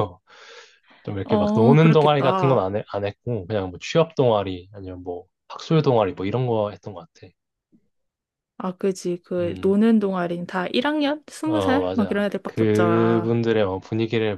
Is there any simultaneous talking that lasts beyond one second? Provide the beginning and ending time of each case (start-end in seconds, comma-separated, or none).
1.2-2.7, 11.4-13.3